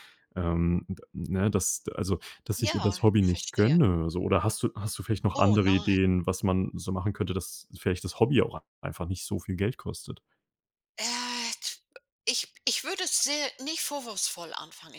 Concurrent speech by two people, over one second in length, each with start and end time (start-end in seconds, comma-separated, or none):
2.6-3.8